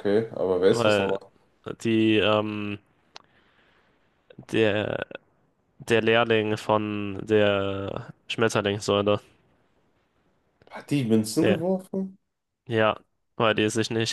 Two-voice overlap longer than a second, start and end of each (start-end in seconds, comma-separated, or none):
none